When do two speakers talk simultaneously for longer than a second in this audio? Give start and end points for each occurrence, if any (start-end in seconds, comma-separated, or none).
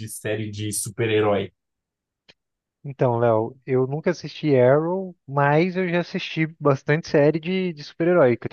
none